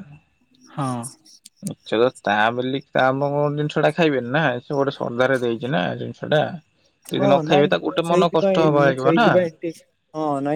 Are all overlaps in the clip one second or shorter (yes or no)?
no